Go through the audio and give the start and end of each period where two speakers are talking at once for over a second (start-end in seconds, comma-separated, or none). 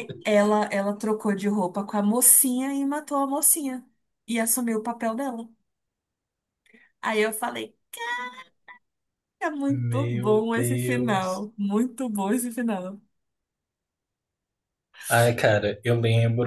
9.7-11.5